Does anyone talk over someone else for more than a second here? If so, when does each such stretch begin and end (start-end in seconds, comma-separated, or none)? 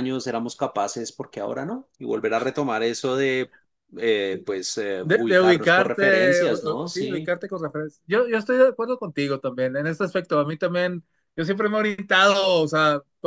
5.0-7.3